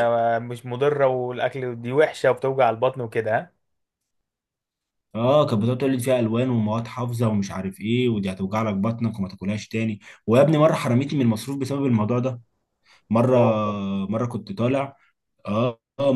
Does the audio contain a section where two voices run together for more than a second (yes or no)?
no